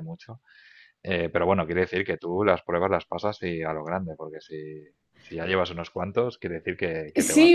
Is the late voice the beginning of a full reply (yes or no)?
yes